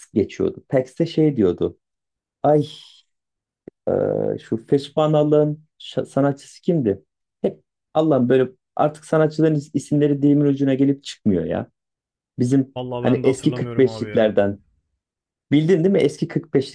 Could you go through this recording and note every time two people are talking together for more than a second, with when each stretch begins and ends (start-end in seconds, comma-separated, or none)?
12.8-14.3